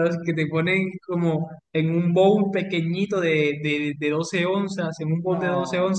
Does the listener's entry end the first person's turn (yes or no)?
no